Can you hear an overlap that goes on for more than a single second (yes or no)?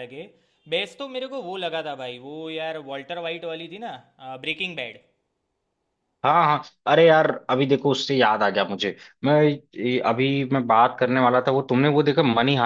no